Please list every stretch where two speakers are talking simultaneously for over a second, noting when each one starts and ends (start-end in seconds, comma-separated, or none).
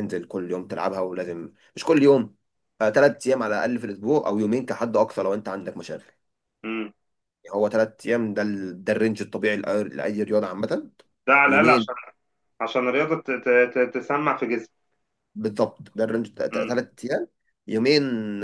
none